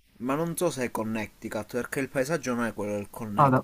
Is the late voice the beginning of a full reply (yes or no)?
yes